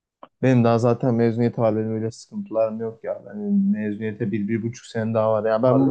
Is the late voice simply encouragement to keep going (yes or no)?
no